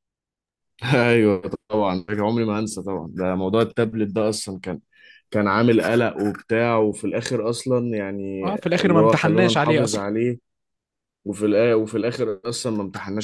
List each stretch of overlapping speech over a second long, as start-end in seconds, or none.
8.4-10.0